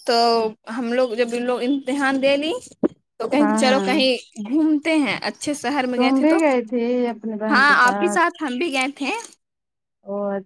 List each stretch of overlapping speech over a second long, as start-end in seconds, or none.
none